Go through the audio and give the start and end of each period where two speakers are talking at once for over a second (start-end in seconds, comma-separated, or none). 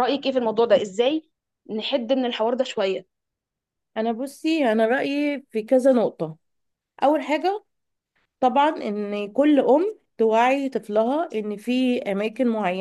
none